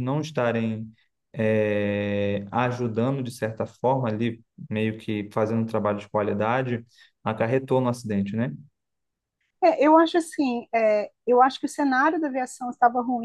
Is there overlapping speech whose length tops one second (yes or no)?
no